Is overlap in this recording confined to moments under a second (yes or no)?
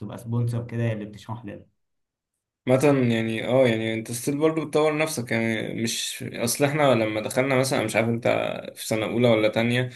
yes